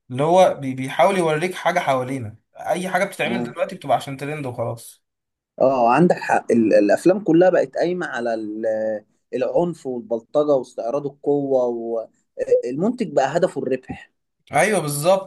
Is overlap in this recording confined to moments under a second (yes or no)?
yes